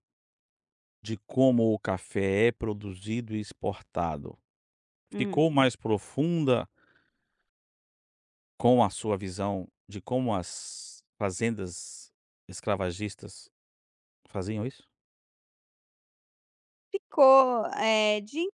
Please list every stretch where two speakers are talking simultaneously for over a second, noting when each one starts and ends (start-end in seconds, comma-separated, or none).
none